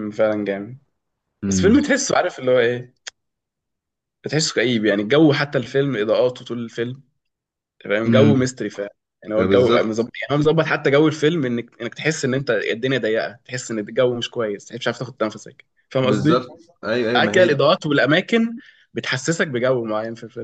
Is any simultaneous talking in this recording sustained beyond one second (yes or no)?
no